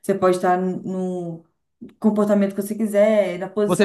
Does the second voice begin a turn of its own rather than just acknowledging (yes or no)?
yes